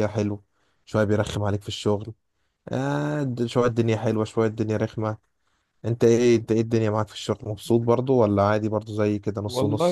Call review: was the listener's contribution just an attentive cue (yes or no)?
no